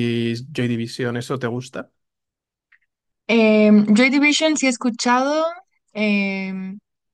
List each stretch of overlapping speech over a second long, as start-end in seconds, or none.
none